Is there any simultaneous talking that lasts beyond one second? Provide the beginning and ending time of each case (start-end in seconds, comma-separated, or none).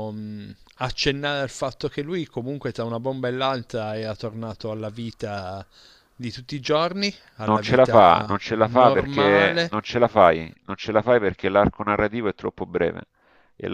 7.4-9.8